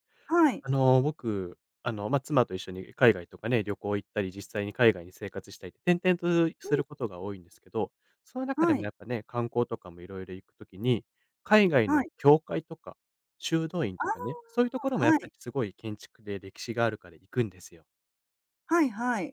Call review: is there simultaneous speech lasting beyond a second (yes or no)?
yes